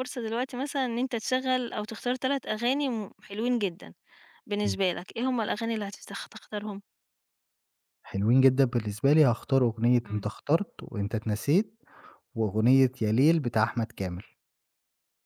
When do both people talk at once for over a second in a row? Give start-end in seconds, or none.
none